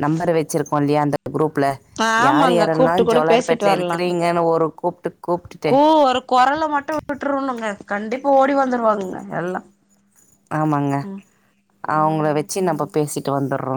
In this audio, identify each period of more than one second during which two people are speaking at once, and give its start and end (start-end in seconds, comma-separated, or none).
2.3-4.1